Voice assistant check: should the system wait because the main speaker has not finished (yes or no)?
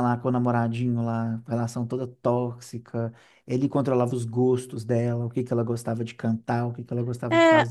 no